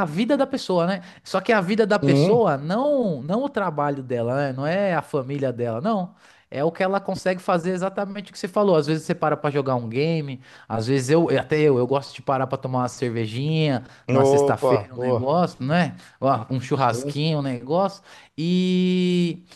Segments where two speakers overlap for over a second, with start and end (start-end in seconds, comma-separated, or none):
14.1-15.4